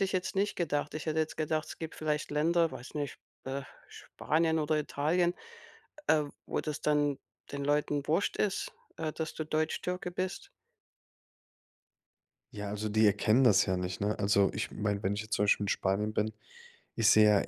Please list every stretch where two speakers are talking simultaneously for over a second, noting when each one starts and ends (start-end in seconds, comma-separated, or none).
none